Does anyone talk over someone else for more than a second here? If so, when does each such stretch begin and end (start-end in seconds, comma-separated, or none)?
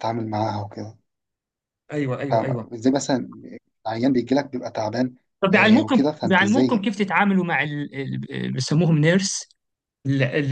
5.5-6.9